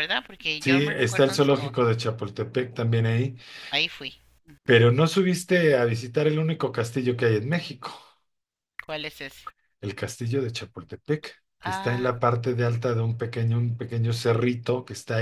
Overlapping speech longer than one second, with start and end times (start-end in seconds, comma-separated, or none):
0.6-1.9